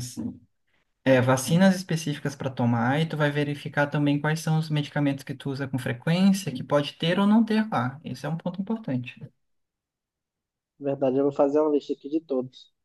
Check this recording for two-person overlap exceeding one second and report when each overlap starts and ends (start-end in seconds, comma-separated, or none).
none